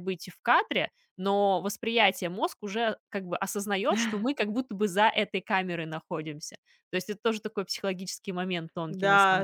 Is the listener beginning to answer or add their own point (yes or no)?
yes